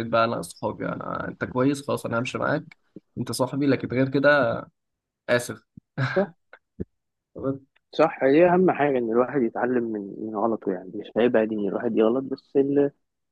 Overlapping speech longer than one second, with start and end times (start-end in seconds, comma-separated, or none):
none